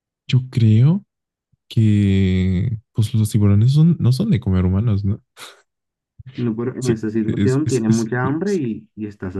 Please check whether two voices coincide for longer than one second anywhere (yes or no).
yes